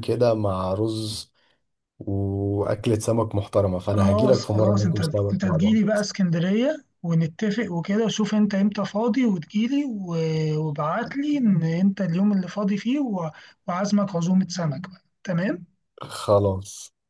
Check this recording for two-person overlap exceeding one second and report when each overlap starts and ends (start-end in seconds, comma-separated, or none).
3.8-5.8